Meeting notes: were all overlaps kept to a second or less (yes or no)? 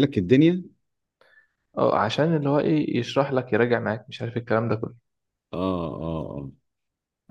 yes